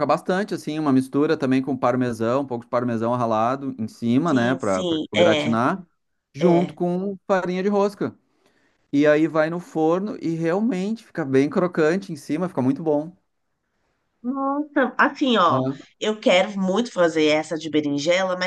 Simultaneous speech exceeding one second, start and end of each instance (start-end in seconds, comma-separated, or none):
4.3-5.6